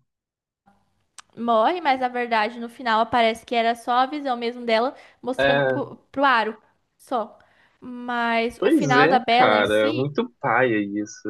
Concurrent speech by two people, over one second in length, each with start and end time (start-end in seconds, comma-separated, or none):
8.6-10.2